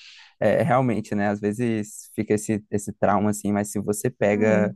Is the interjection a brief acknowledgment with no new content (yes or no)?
yes